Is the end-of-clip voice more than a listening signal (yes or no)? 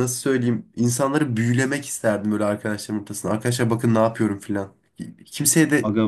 no